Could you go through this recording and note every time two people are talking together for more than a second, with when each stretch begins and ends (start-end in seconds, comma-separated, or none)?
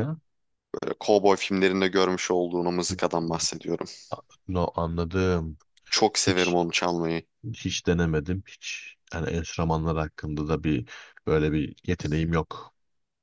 none